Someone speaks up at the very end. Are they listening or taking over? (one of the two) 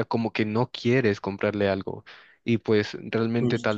listening